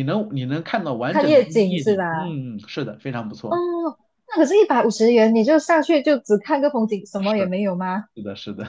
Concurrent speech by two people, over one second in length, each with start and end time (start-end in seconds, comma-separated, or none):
1.1-2.4